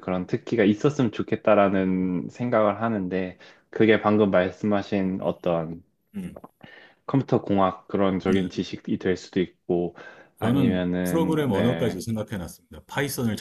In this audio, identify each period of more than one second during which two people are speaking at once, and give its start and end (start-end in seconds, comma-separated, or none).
10.4-12.0